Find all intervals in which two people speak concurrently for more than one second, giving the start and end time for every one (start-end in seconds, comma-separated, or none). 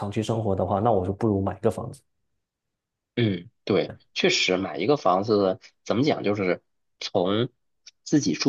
none